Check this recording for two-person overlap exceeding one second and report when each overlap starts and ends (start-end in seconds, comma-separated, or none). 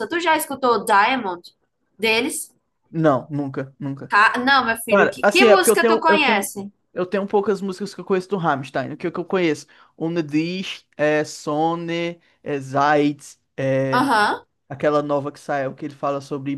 4.9-6.5